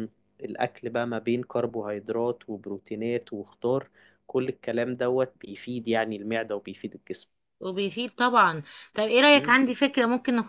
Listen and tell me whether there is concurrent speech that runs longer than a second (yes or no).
no